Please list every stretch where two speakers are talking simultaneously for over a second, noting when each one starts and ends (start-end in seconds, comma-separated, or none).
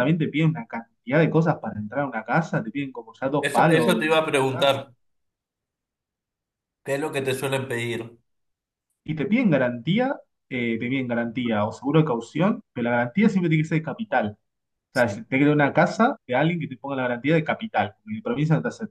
3.4-4.7